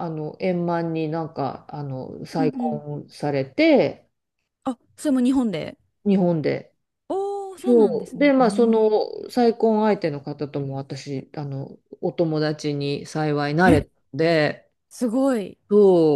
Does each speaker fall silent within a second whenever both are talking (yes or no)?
no